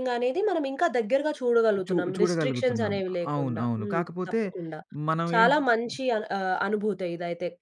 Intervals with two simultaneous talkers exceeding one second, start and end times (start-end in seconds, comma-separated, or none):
1.9-4.4